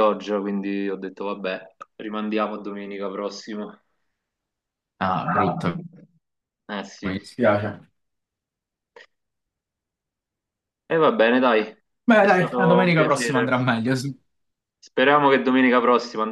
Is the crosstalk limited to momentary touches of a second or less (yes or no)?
no